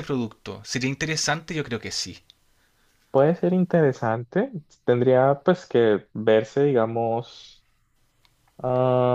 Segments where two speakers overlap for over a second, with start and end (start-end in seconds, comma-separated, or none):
none